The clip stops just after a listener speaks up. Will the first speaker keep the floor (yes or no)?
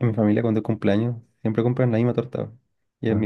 yes